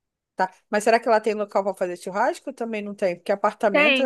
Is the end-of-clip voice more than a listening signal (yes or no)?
yes